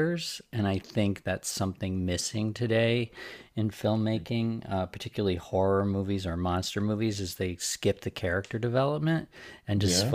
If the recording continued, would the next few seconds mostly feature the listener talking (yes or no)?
no